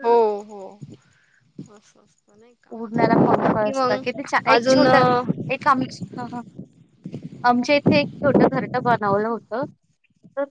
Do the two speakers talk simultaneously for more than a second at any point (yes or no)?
yes